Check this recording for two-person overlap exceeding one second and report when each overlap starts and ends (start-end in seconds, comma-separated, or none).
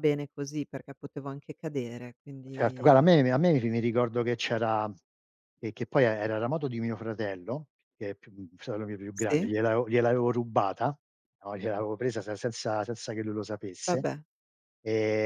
none